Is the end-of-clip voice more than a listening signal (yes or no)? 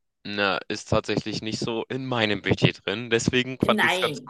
no